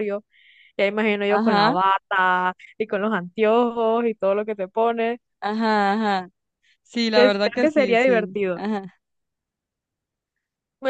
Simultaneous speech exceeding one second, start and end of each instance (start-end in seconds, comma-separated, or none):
7.1-8.6